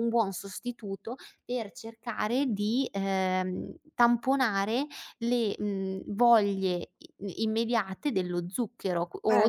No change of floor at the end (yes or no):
no